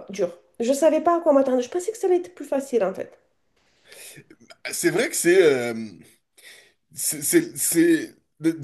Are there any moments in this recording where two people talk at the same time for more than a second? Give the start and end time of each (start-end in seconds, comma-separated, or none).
none